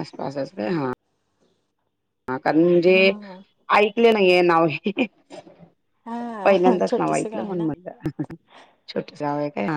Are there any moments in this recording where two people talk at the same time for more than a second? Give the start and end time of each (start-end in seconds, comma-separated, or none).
6.4-7.7